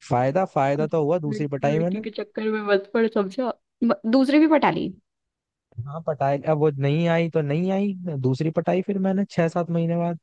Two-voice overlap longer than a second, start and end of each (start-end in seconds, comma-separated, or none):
0.8-2.0